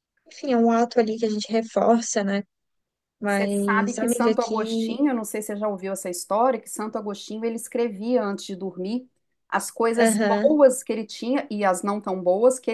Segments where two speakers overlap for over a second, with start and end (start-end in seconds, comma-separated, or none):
3.2-5.0